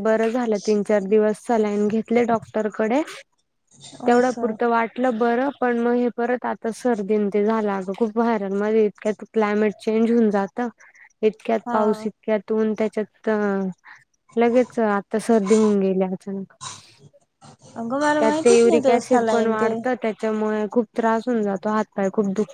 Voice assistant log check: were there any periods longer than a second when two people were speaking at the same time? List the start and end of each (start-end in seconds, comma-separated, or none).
18.2-19.7